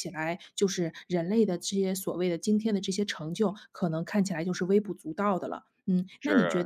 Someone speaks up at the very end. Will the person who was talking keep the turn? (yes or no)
yes